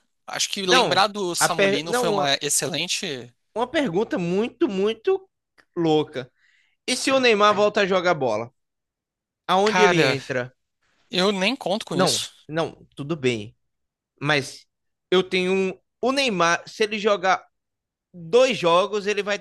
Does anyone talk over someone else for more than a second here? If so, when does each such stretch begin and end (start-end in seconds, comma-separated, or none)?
0.7-2.4